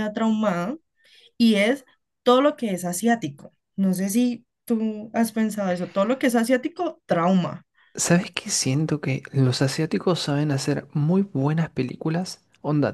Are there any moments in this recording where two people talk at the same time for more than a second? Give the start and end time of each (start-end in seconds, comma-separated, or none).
none